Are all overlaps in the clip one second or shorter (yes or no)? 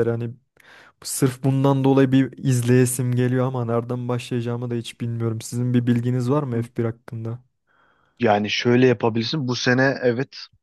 yes